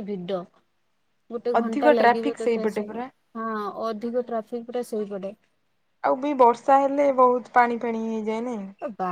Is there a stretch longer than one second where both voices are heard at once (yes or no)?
yes